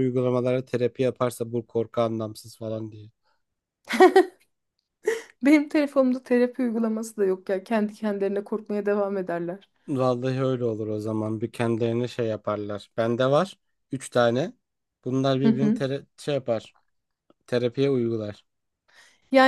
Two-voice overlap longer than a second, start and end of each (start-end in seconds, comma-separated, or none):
none